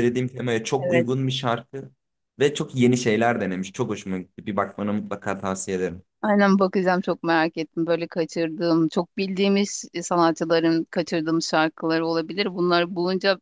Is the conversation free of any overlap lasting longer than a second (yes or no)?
yes